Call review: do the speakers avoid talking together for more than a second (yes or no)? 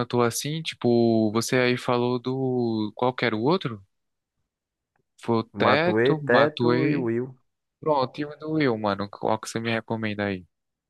no